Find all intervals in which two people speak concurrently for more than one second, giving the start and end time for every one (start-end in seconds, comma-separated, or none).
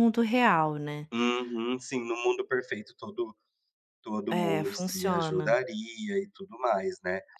4.3-5.6